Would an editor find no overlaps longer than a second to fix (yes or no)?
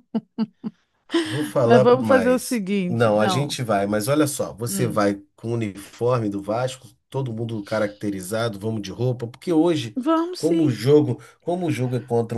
no